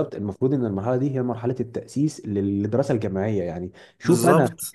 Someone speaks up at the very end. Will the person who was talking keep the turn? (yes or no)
yes